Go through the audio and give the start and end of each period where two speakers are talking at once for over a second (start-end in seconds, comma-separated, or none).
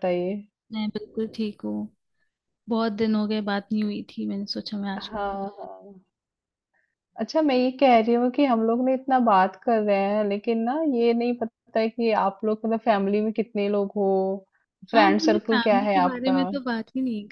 14.9-16.4